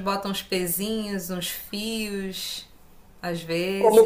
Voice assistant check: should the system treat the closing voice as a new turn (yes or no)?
yes